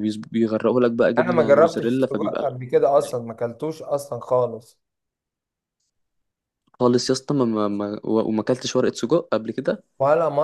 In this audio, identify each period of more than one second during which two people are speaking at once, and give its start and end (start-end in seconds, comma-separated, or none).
1.2-3.2